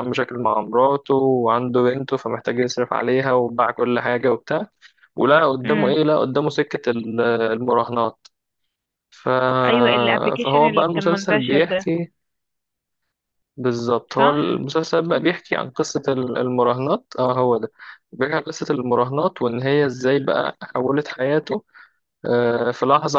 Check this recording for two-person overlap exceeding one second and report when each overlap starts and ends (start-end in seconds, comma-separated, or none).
10.4-11.9